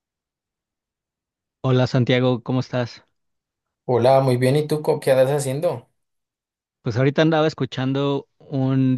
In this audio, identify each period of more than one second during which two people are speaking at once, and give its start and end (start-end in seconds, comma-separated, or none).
none